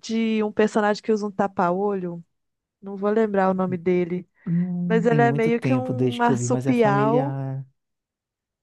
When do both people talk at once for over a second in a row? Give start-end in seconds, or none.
4.9-7.4